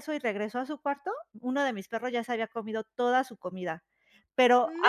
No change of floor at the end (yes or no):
yes